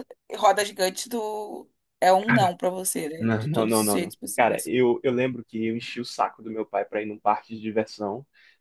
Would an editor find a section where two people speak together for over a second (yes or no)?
yes